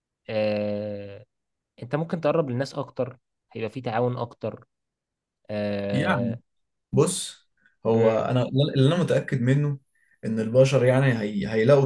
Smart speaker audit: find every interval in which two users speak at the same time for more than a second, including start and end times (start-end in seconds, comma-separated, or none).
none